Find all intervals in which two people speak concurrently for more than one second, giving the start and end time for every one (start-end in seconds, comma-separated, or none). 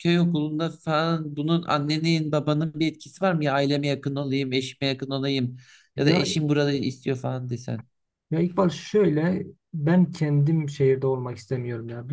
none